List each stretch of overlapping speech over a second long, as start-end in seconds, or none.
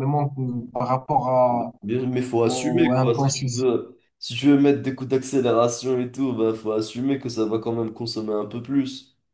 2.4-3.7